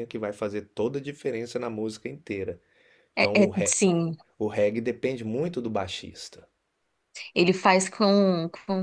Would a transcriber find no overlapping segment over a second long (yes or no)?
yes